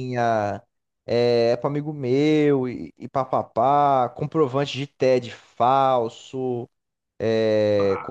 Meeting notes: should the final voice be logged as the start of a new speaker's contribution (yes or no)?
no